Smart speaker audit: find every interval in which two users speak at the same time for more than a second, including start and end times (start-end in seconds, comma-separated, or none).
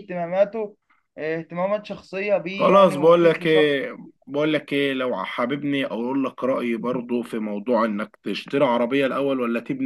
2.5-3.7